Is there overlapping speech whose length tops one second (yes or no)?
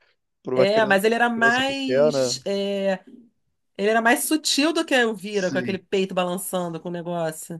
yes